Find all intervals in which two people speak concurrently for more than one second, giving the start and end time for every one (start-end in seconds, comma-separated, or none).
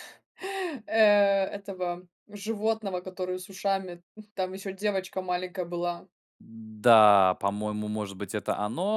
none